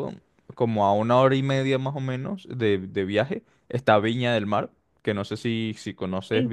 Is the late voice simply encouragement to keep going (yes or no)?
yes